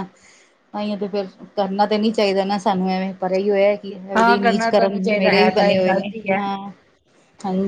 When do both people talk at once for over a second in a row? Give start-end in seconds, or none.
4.2-6.4